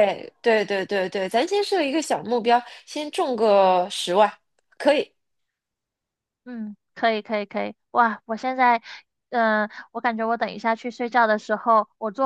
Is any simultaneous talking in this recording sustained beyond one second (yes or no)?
no